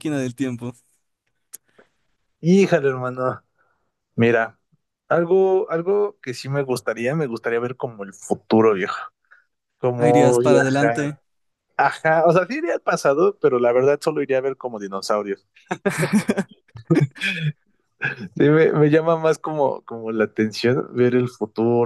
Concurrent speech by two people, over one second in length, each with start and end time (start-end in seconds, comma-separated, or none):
9.9-11.2